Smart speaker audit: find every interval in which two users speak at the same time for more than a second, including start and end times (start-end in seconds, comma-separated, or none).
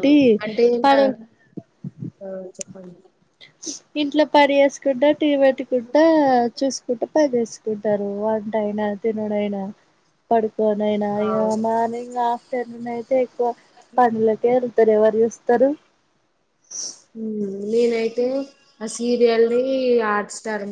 none